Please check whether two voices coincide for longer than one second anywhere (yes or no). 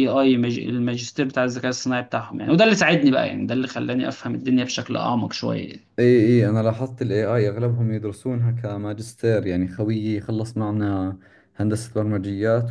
no